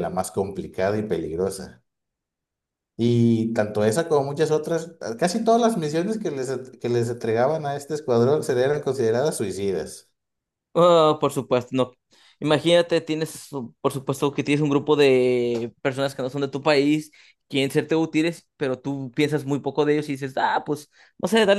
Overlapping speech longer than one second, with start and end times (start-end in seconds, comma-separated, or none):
none